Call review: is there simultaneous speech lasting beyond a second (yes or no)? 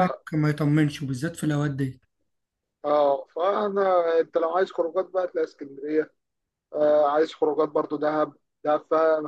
no